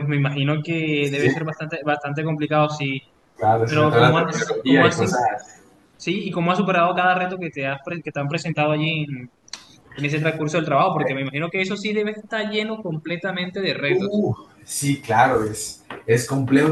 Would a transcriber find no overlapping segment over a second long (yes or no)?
no